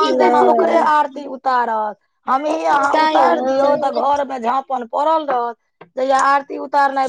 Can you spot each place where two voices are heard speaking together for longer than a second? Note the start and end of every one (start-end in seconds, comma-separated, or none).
2.3-4.0